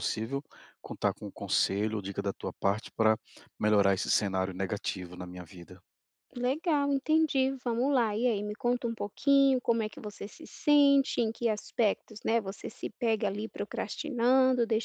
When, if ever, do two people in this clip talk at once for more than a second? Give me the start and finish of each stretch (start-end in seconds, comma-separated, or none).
none